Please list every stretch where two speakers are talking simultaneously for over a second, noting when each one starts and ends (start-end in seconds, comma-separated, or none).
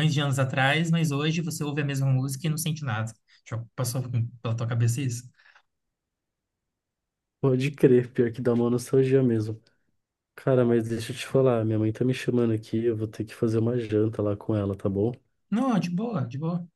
none